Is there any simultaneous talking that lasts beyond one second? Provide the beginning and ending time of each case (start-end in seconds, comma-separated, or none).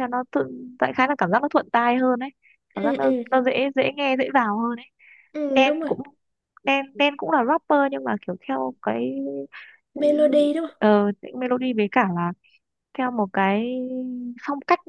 none